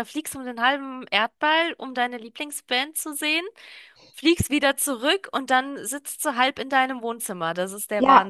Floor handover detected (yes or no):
yes